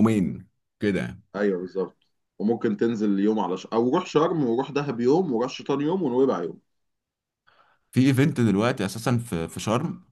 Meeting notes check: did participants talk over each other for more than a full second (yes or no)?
no